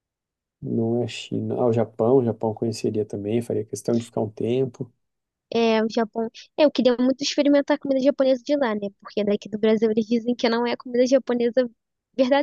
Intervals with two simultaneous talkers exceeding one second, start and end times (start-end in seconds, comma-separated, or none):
none